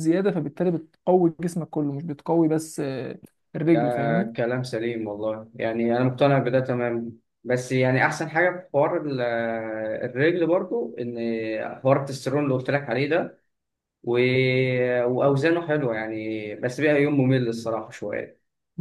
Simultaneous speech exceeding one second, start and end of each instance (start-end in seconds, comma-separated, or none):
none